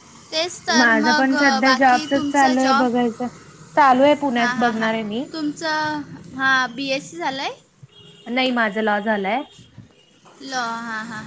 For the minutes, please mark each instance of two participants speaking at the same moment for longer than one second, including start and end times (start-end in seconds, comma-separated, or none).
0.8-2.9